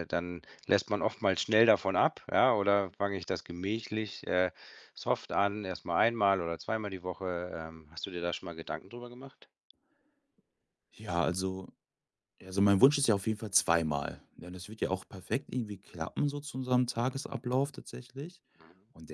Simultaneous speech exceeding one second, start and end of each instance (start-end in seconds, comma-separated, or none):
none